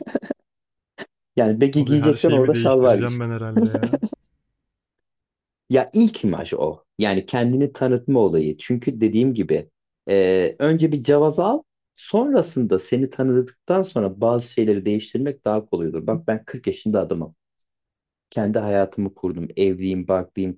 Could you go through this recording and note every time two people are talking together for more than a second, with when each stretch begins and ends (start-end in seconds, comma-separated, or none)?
1.8-3.2